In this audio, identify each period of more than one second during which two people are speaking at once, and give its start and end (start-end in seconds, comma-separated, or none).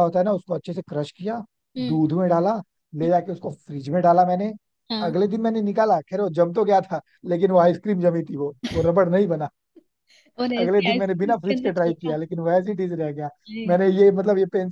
10.6-12.2